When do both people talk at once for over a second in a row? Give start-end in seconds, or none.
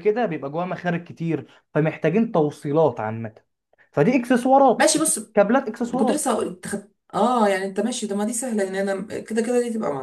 none